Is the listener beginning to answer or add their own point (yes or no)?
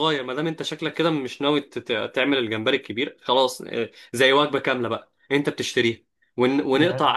no